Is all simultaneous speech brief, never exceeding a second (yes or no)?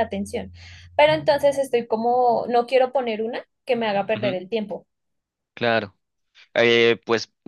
yes